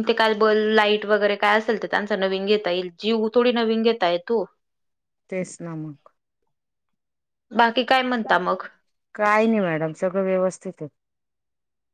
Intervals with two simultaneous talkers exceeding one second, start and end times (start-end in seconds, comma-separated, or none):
none